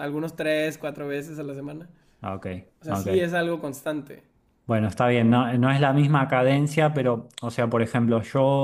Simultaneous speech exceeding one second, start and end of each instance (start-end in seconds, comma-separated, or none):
none